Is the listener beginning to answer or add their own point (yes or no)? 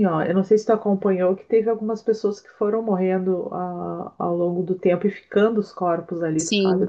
yes